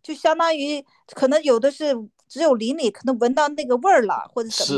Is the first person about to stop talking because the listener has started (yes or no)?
no